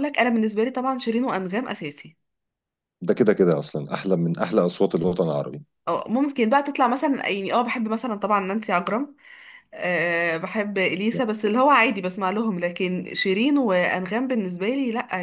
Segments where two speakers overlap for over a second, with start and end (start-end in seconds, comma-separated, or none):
none